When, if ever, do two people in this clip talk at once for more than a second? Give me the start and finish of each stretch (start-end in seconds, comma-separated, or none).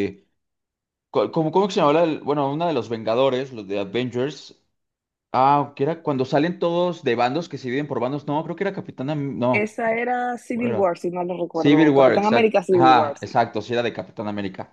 11.5-13.4